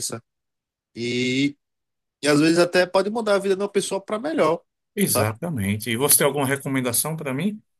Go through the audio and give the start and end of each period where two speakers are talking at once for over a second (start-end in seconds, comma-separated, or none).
none